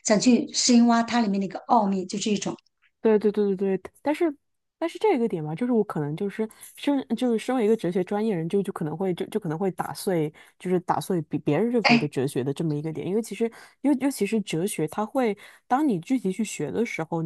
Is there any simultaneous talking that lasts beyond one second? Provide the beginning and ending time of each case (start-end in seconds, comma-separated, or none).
none